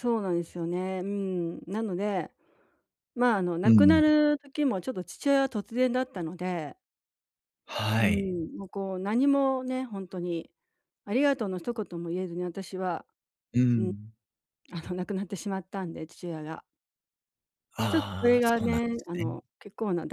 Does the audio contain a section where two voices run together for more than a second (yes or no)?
yes